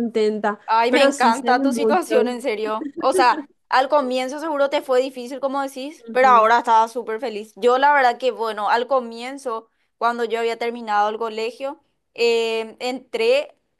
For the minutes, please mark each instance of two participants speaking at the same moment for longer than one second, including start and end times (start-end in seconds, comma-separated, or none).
0.7-2.4